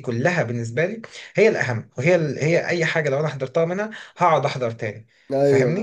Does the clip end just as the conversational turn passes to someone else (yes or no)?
yes